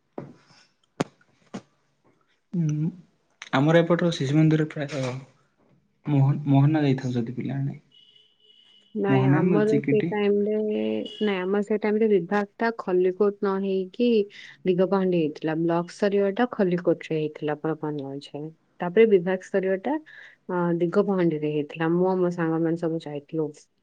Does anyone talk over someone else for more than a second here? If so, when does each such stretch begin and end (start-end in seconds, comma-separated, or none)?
none